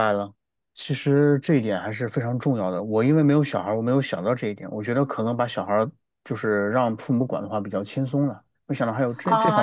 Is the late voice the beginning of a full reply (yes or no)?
yes